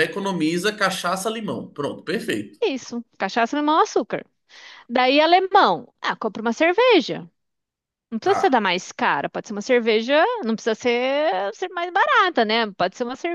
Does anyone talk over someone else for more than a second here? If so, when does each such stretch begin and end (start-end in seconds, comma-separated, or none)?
none